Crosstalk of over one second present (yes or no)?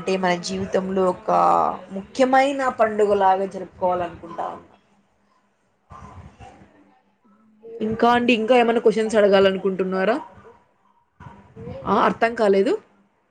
yes